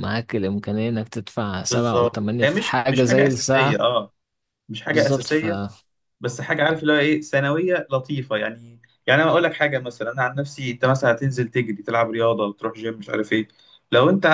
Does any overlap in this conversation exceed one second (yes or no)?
yes